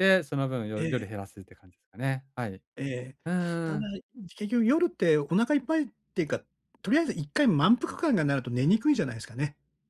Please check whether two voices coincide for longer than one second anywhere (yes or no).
no